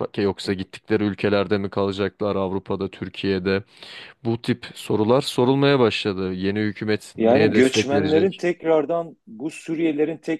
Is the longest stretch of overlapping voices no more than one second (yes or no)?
no